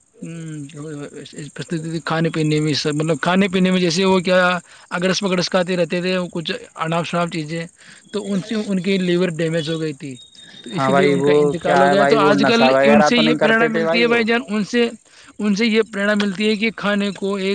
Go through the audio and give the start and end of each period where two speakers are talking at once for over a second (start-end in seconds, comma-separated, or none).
10.8-14.2